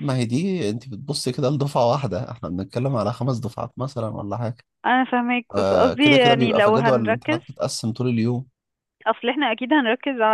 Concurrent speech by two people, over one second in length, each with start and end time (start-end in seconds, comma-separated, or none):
5.5-7.4